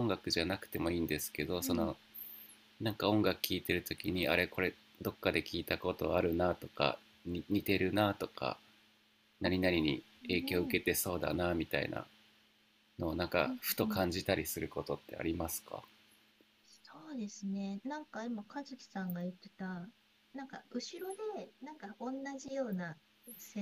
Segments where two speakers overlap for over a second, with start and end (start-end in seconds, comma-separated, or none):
9.4-10.8